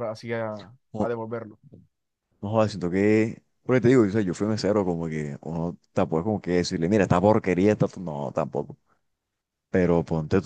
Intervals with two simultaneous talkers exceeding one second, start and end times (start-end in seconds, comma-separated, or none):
none